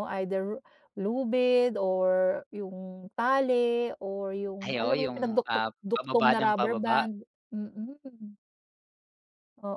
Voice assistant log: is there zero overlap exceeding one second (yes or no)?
no